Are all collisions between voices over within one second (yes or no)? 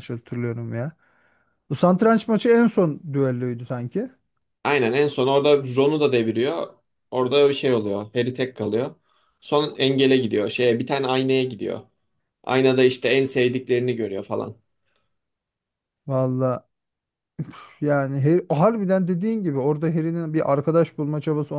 yes